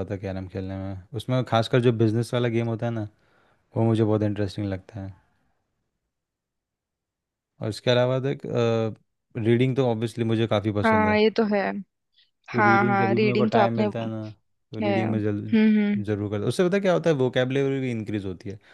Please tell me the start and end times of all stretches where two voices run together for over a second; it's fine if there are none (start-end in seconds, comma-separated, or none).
12.6-13.8